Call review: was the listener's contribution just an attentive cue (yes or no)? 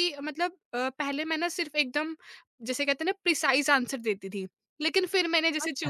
yes